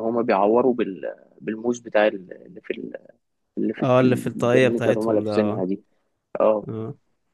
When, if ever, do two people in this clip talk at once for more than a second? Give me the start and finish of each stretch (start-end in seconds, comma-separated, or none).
3.8-5.6